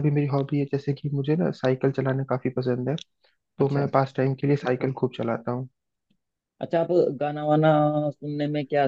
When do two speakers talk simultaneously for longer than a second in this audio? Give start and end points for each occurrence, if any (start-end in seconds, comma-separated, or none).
none